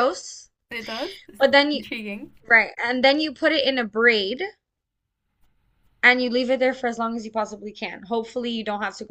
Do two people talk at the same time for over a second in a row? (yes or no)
no